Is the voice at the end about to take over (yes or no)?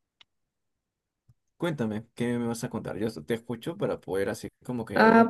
yes